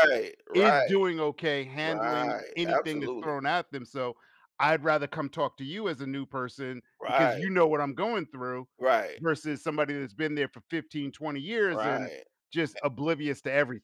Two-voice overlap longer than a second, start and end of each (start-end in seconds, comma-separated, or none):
1.8-3.4